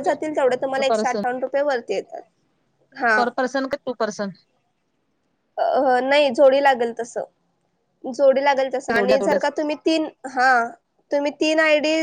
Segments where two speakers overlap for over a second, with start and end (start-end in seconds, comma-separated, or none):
none